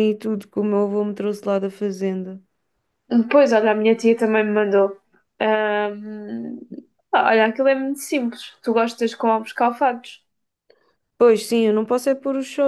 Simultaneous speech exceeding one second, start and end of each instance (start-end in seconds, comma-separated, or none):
none